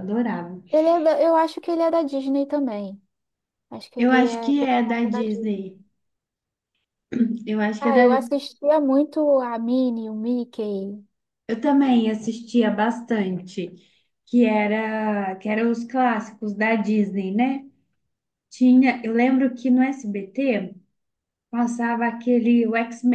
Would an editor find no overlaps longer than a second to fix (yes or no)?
no